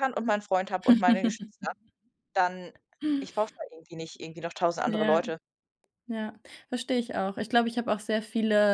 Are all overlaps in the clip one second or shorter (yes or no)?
yes